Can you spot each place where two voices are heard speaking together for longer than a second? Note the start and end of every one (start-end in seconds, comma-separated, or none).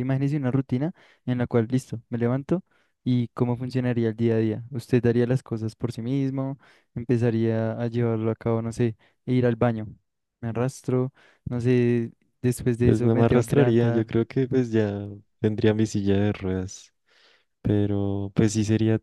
12.8-14.1